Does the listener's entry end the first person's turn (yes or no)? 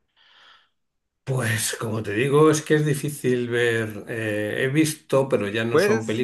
no